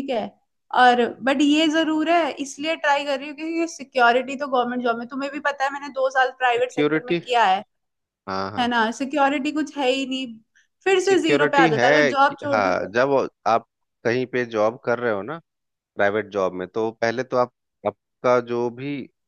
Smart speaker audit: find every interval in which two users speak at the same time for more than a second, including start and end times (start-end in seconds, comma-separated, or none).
11.0-12.9